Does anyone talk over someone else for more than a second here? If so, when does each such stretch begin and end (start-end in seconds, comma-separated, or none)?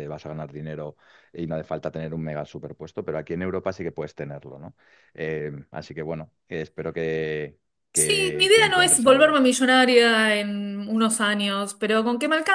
7.9-9.4